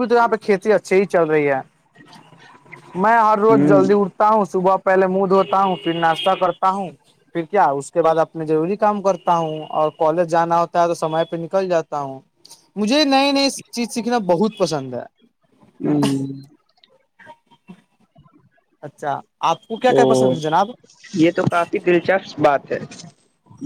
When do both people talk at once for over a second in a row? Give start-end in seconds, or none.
none